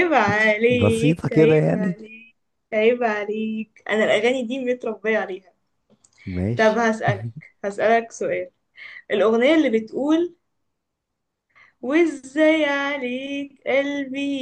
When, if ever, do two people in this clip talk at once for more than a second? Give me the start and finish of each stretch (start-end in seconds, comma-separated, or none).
0.7-2.0